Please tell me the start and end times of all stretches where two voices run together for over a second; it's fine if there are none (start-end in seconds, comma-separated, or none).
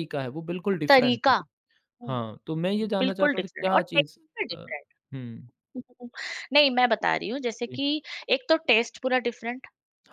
3.0-4.7